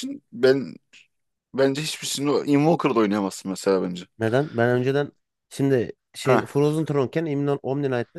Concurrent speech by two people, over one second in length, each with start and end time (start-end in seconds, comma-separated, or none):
none